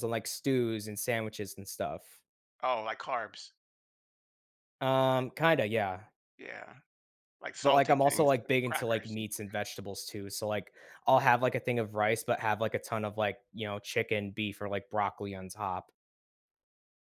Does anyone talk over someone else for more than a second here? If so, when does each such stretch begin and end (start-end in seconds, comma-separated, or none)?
7.6-9.2